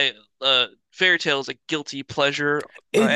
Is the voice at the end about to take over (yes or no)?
yes